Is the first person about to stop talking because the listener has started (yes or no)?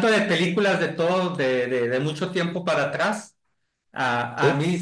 no